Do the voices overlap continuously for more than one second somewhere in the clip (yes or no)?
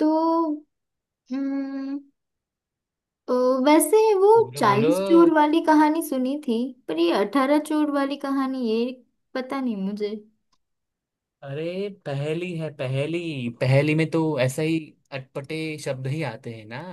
no